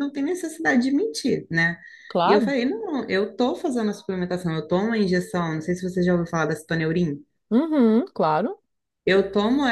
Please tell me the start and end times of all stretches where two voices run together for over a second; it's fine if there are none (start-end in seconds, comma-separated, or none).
none